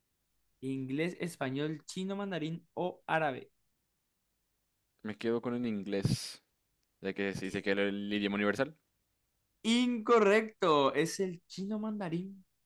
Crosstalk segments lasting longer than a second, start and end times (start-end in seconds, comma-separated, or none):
none